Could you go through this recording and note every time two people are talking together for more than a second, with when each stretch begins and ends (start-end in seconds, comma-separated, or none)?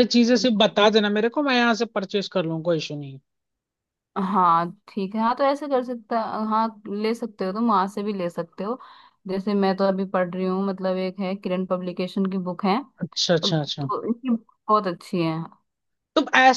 none